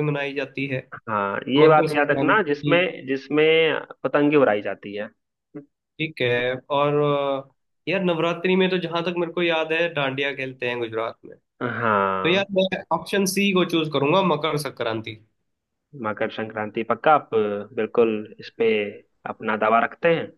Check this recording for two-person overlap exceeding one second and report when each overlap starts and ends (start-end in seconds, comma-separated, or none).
1.6-2.8